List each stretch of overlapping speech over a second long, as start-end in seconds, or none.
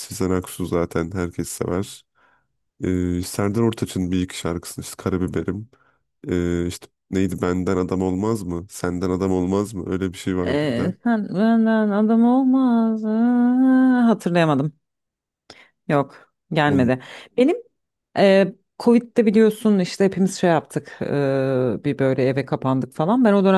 none